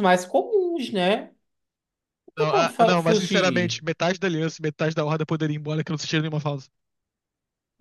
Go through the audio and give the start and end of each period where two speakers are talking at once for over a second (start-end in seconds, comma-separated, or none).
2.4-3.8